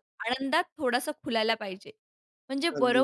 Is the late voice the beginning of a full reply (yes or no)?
no